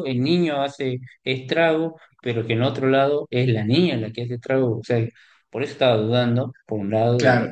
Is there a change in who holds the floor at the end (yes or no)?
yes